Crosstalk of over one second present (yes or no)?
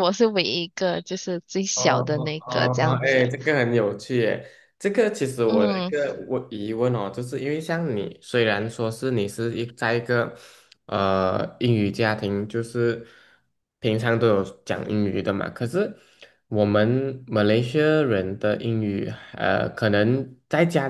yes